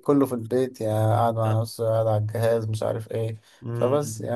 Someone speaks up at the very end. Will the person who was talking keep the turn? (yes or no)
no